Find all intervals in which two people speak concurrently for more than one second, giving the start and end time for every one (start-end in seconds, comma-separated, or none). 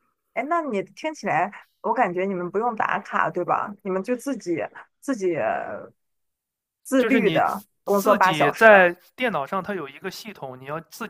7.0-8.7